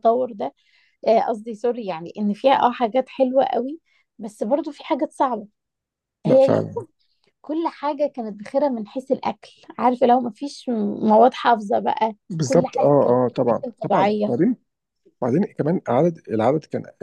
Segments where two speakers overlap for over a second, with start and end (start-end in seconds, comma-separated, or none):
12.3-14.3